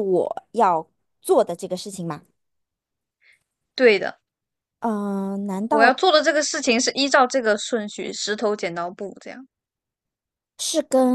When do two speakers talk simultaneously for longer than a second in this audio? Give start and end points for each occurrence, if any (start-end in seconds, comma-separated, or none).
none